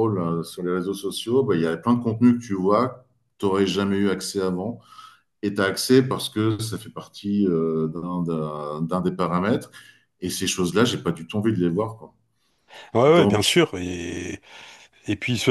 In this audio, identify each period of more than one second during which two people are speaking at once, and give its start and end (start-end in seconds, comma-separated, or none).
none